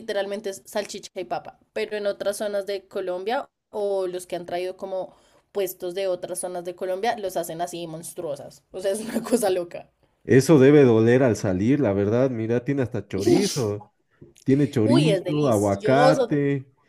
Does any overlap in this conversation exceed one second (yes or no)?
yes